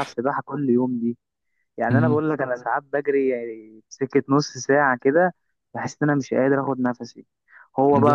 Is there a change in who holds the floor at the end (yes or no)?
no